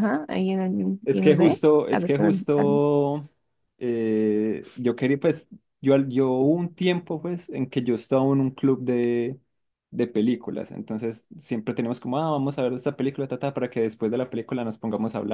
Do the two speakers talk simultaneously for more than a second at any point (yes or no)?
yes